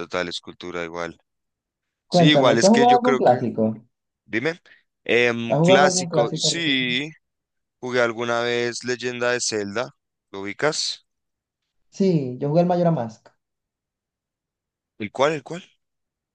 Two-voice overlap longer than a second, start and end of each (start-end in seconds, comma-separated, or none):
2.1-3.4, 5.5-6.8